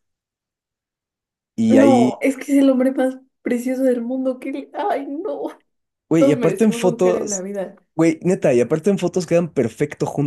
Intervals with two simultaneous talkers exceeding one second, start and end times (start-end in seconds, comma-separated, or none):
6.2-7.4